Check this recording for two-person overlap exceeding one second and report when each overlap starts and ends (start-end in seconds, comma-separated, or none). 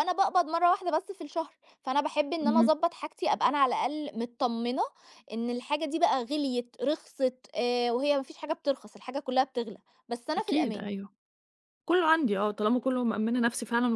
none